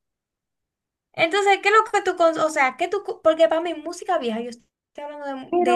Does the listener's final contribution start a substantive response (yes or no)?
no